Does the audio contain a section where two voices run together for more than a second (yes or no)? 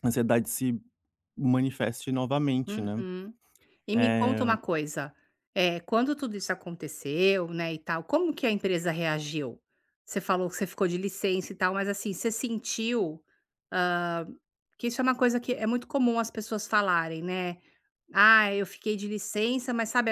no